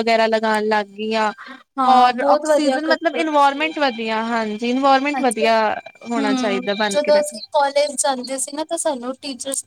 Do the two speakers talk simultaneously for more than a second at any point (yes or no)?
yes